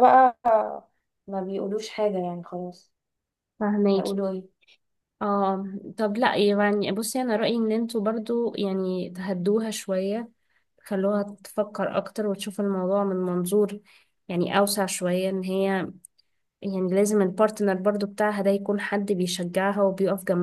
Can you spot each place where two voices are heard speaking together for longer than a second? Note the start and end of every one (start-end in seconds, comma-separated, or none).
none